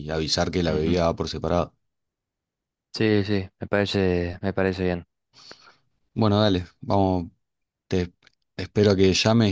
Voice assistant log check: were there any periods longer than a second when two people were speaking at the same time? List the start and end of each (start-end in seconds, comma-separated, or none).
none